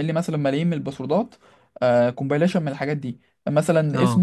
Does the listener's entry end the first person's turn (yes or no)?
no